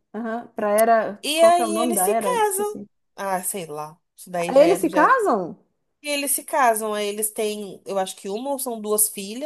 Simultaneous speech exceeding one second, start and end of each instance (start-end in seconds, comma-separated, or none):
1.2-2.9